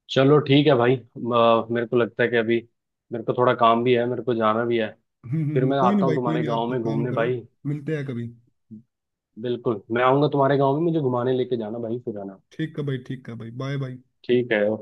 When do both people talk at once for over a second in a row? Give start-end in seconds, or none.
5.5-7.4